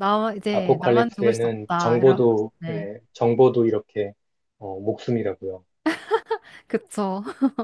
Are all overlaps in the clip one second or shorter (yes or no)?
no